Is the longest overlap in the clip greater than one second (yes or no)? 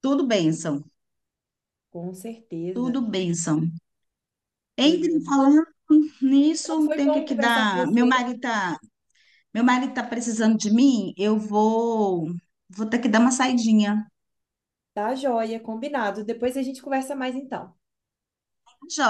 yes